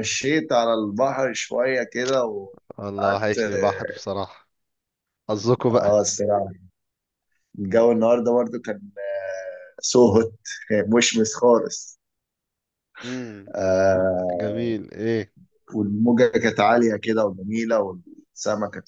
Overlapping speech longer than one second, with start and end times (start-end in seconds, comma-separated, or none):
none